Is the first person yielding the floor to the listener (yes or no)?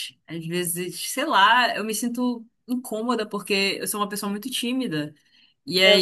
no